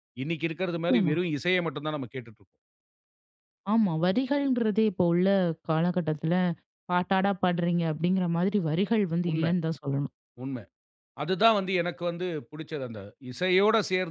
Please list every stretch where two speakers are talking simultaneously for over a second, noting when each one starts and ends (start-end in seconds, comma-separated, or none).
none